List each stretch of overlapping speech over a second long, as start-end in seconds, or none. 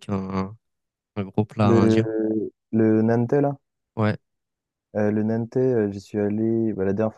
none